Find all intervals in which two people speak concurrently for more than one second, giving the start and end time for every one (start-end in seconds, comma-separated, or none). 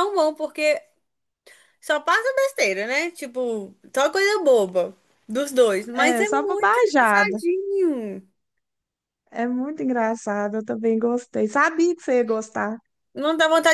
5.9-7.4